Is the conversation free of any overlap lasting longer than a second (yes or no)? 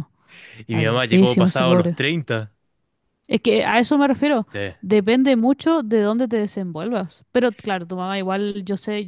no